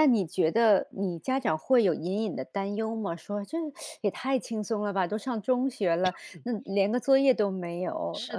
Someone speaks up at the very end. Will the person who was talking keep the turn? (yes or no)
no